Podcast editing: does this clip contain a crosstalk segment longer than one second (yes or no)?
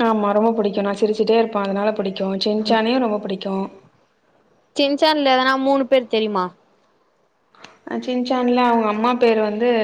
no